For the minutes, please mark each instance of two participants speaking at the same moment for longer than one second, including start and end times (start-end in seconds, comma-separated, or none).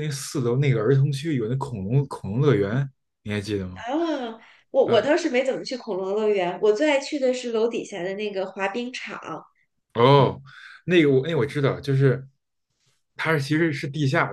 none